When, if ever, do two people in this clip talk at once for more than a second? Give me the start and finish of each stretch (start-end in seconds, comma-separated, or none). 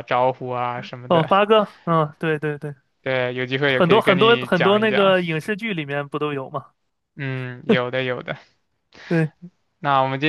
3.6-5.1